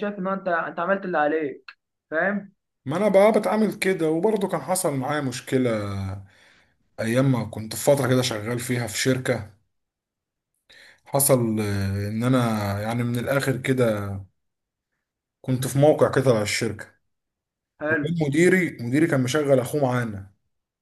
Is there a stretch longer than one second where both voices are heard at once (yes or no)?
no